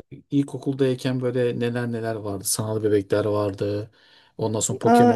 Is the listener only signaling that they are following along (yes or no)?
yes